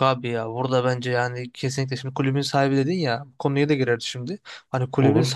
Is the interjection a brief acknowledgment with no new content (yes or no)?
yes